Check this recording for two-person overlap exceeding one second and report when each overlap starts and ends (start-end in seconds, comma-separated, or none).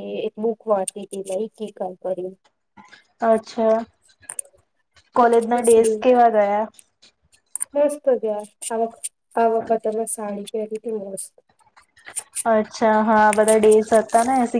none